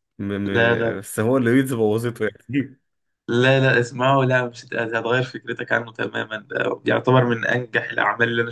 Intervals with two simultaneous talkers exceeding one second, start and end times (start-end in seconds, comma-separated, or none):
none